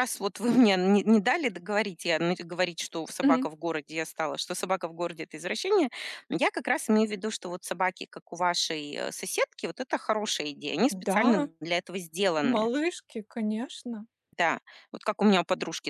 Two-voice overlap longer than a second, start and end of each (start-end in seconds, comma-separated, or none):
none